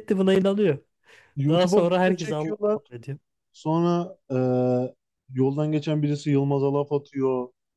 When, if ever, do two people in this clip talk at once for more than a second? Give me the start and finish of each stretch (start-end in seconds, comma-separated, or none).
1.5-2.8